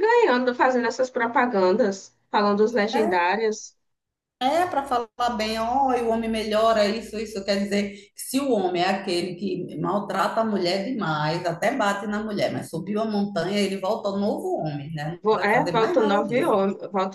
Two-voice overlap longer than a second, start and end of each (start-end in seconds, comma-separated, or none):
15.2-16.6